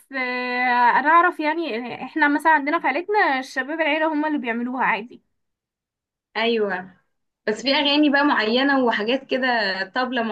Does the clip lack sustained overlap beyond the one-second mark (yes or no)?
yes